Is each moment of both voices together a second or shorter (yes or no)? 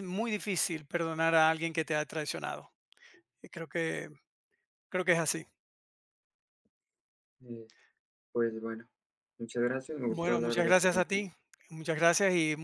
no